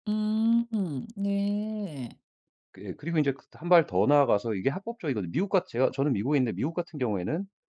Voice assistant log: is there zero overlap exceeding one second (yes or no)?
yes